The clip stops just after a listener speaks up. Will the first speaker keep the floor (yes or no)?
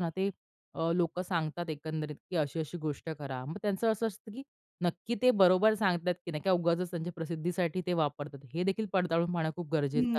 no